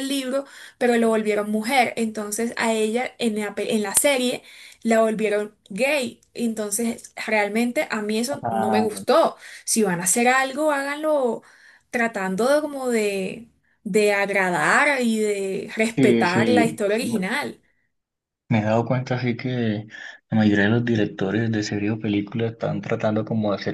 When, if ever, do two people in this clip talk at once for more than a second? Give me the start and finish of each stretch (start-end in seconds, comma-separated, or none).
15.9-17.3